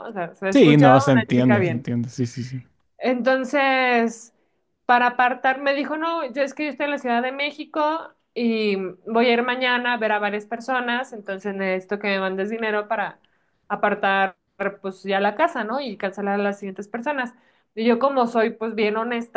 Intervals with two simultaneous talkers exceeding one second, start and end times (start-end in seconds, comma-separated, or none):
0.5-1.9